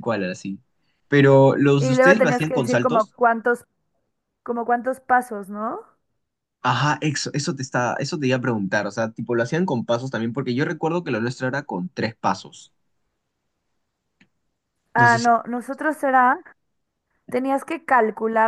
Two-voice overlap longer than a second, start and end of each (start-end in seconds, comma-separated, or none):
1.8-3.1